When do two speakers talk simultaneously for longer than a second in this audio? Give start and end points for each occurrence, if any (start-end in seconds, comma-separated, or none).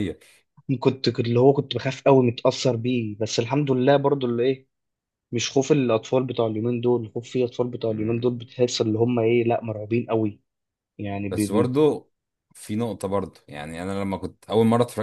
none